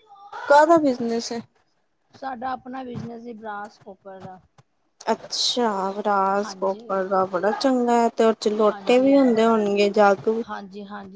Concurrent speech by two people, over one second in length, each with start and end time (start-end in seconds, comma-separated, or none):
8.7-10.4